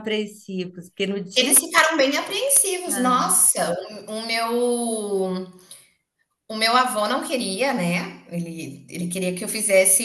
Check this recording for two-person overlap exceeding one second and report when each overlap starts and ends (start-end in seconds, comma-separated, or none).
none